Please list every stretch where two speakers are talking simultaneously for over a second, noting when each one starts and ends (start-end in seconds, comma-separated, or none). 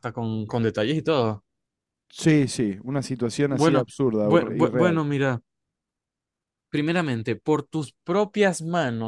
3.5-5.0